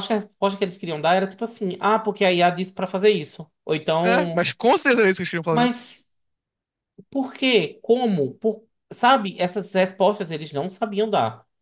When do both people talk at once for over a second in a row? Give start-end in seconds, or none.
none